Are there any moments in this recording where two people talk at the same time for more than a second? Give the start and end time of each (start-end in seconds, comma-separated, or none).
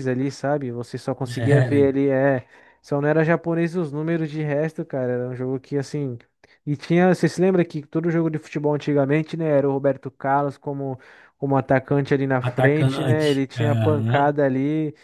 12.4-14.3